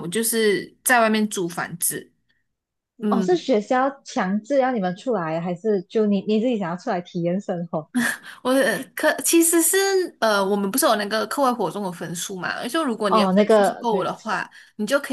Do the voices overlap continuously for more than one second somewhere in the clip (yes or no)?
yes